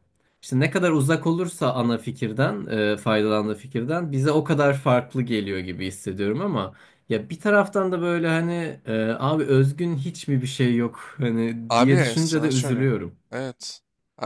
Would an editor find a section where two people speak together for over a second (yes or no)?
yes